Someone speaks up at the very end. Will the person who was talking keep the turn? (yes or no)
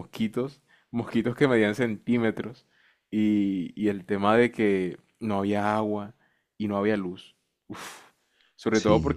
yes